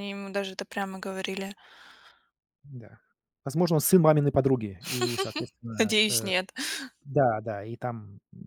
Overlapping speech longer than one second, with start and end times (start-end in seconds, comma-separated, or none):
none